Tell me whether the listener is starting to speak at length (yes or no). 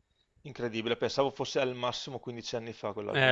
yes